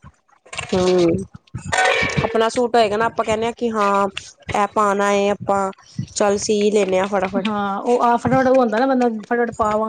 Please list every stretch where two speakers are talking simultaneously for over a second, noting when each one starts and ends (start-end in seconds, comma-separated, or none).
none